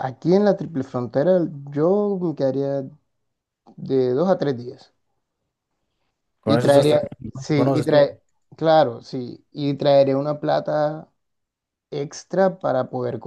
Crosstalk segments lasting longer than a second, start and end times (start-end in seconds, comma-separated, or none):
6.5-8.1